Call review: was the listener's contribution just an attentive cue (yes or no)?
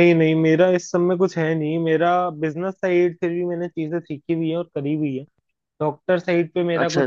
yes